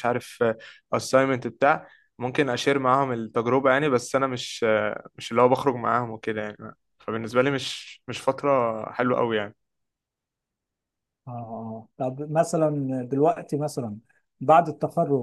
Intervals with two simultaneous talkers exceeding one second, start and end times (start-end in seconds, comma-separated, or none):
none